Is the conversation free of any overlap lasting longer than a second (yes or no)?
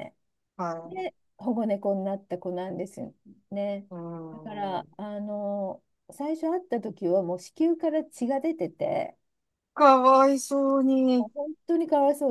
yes